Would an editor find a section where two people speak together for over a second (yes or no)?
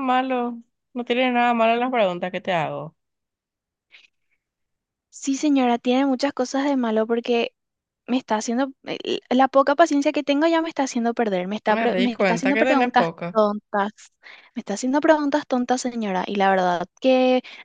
yes